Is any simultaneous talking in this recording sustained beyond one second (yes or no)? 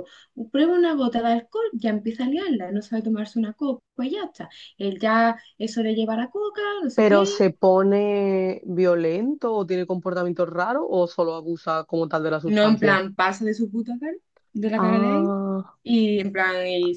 no